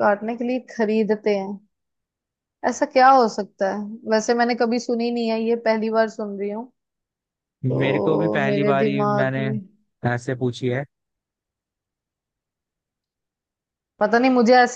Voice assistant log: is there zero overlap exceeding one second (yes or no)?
no